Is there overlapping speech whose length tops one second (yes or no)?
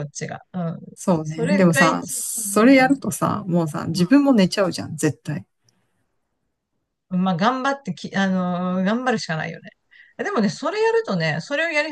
yes